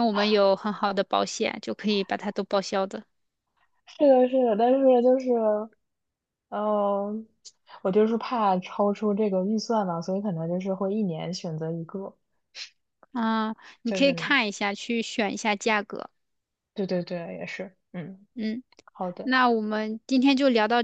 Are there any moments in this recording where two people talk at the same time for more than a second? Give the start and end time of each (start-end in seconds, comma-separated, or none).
none